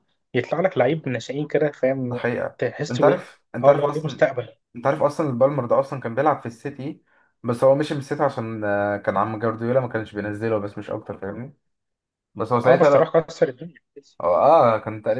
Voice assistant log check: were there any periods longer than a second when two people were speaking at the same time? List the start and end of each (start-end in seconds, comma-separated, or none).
2.0-4.3